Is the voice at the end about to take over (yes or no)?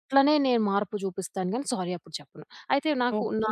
yes